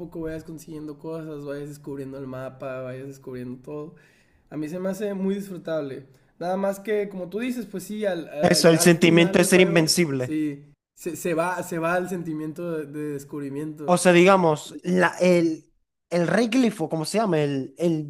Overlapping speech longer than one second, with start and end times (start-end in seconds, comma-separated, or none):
8.4-10.4